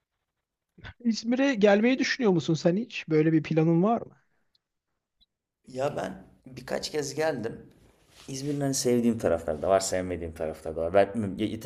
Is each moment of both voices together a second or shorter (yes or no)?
yes